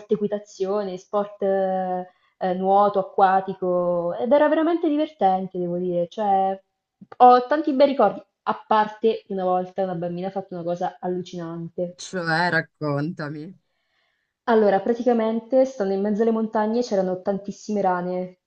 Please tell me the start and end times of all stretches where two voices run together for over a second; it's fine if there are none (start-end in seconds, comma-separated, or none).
none